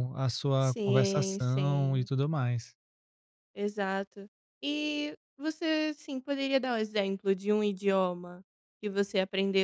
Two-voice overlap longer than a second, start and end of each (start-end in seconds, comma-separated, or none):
0.6-2.1